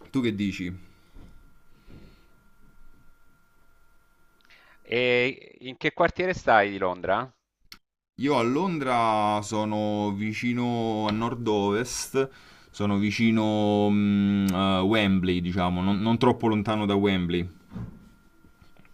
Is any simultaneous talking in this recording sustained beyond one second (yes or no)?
no